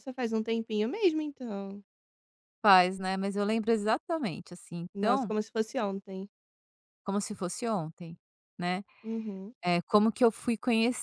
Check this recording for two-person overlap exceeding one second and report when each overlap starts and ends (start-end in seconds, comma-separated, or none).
none